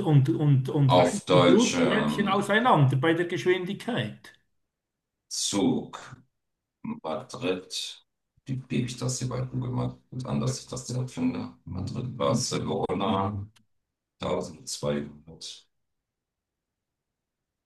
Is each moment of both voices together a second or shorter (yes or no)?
no